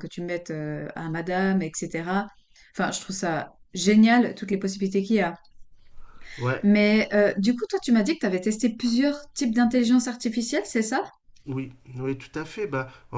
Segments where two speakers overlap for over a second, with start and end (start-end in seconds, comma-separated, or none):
none